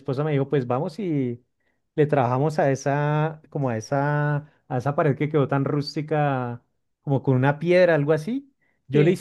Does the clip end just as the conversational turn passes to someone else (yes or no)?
no